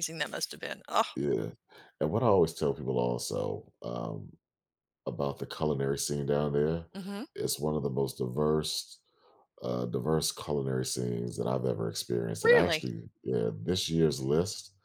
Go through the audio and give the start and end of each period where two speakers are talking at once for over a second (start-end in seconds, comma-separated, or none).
none